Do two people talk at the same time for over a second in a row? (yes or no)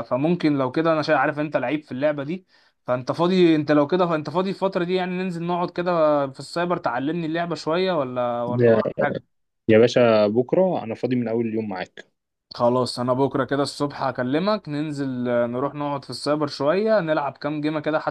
no